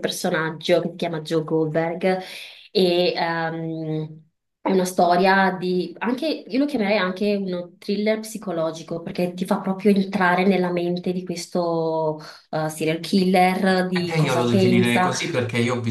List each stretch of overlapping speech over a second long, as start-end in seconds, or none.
13.9-15.1